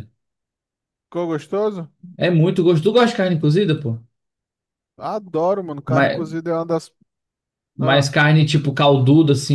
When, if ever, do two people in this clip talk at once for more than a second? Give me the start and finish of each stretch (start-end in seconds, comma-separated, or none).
none